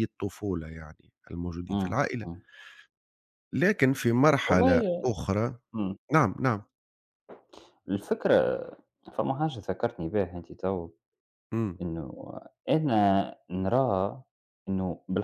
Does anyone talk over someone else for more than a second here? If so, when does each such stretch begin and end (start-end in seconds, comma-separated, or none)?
none